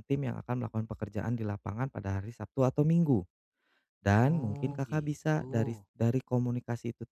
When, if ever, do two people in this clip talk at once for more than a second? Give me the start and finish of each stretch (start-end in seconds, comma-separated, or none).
4.2-5.9